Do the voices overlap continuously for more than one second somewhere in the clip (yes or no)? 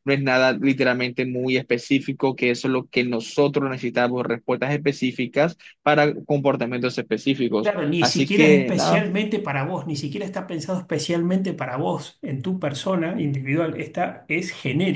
yes